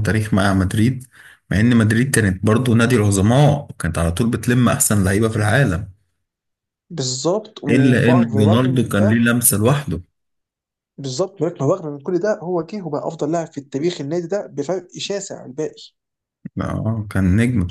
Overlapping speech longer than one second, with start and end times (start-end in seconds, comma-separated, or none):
7.7-9.3